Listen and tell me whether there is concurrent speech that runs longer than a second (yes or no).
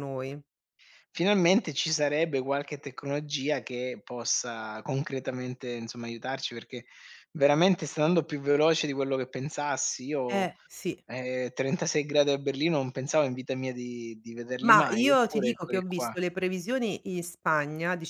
yes